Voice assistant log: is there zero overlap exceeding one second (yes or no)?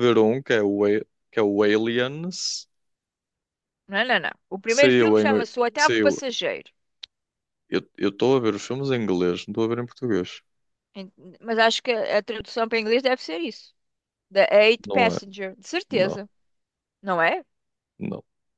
no